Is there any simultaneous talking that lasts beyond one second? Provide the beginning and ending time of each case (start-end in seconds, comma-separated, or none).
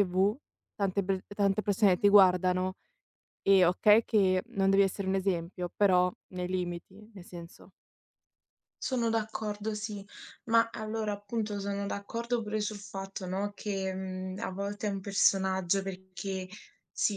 none